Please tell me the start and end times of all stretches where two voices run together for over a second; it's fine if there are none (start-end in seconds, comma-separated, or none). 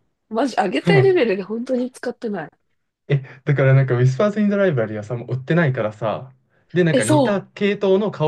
none